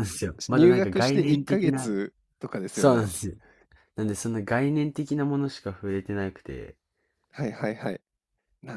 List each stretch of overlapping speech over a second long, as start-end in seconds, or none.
0.5-1.9